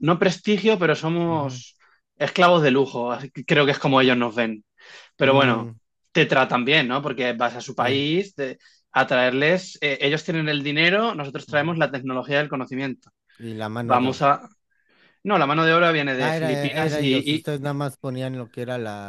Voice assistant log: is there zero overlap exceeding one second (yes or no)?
no